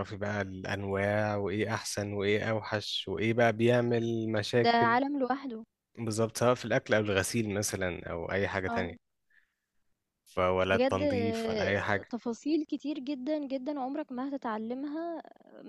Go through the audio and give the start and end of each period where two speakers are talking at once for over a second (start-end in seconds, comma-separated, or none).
10.7-12.1